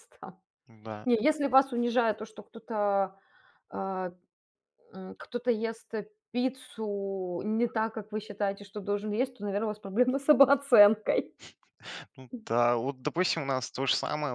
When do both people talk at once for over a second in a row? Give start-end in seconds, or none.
none